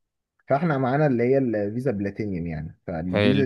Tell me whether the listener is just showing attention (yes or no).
yes